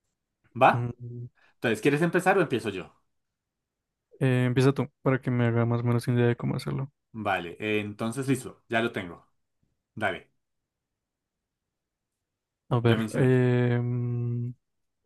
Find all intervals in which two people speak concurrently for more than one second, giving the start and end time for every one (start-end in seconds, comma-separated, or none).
none